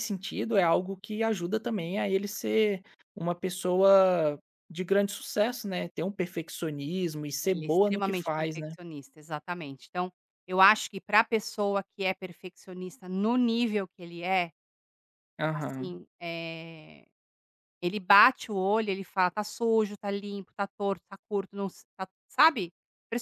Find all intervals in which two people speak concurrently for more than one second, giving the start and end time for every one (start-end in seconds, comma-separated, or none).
7.4-8.7